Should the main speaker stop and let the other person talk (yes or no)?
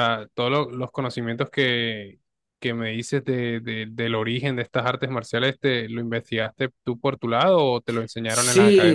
yes